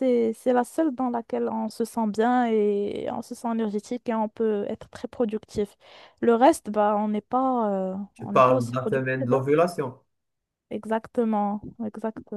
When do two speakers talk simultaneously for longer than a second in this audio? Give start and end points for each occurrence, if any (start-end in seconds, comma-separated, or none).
8.1-9.4